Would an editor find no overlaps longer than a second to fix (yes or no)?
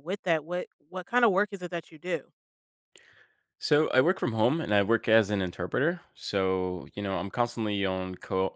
yes